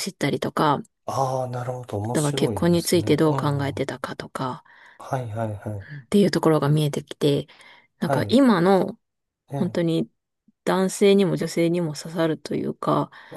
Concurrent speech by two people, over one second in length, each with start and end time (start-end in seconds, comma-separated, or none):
2.0-3.9